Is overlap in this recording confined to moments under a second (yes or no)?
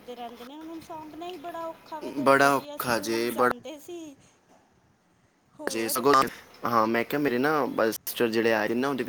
no